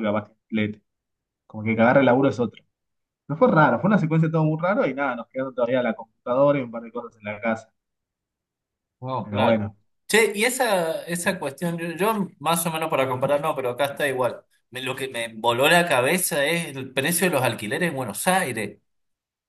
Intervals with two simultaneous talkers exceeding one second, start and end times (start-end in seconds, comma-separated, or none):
none